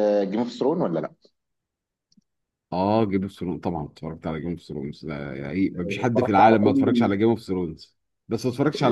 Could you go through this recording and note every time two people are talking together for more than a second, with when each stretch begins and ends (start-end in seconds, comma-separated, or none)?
5.8-7.1